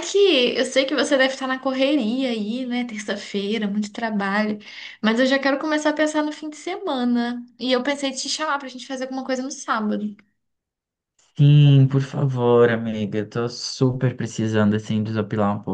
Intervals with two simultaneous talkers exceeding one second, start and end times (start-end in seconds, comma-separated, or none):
none